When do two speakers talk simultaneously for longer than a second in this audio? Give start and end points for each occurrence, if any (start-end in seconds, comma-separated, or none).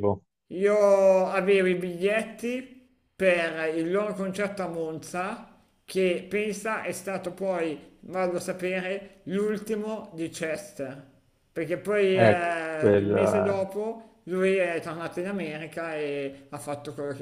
12.1-13.6